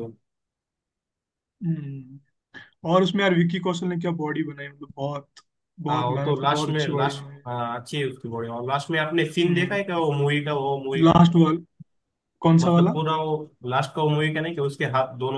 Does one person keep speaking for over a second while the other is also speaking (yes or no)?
yes